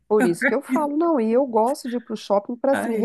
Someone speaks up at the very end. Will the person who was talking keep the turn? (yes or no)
yes